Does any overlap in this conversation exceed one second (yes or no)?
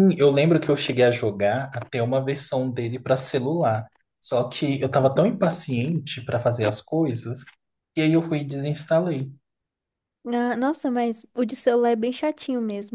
no